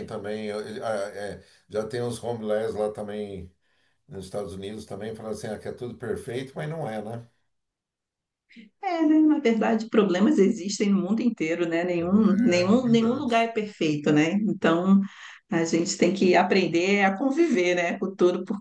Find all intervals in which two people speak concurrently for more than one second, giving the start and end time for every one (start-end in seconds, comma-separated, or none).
12.0-13.5